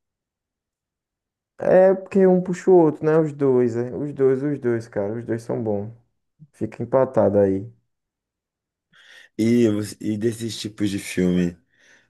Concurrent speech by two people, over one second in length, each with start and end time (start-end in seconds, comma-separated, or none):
none